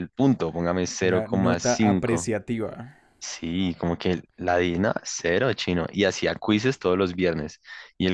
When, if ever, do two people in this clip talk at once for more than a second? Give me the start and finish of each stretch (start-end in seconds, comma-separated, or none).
1.1-2.3